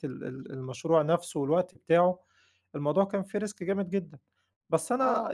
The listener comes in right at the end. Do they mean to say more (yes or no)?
yes